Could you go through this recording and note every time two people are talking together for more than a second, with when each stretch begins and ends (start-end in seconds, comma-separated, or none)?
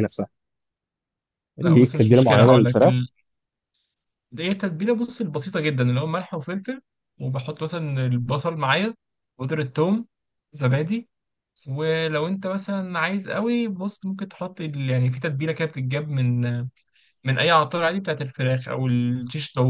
1.6-3.0